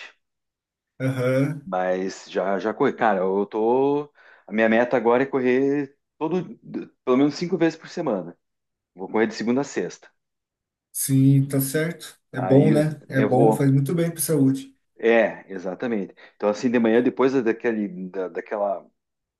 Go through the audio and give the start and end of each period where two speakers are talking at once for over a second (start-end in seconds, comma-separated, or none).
12.4-13.7